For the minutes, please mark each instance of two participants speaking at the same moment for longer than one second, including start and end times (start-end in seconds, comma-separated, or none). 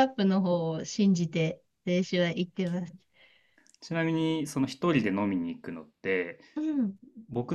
none